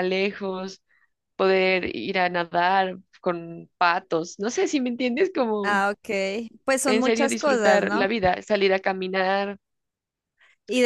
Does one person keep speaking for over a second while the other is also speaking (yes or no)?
yes